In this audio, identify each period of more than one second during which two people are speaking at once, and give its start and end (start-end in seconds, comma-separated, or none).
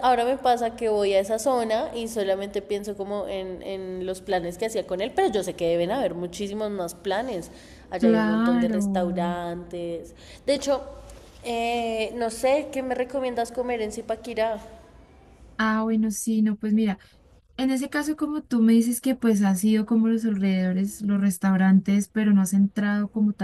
8.0-9.4